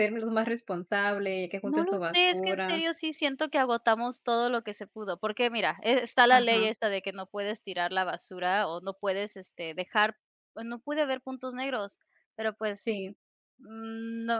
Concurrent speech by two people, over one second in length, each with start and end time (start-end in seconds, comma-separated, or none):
1.6-2.8